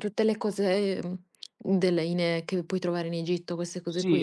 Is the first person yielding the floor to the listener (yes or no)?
yes